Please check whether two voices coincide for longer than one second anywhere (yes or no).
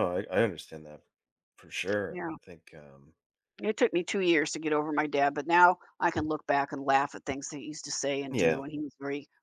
no